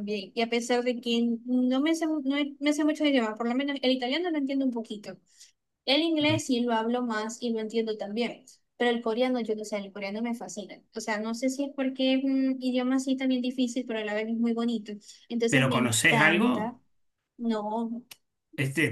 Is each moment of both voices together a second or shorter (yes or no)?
no